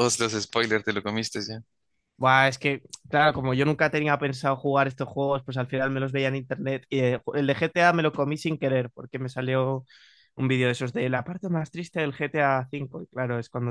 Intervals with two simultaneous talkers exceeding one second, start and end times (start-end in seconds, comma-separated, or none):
none